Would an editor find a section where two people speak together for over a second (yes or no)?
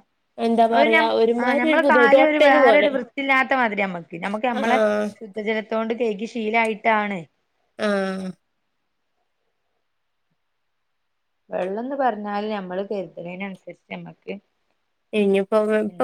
yes